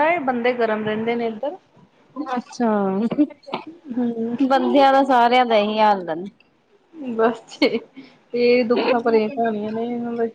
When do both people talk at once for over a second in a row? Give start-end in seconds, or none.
none